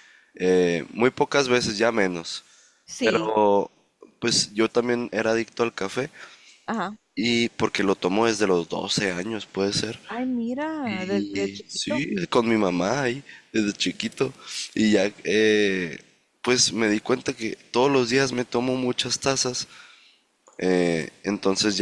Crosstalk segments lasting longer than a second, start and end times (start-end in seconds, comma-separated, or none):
10.8-12.1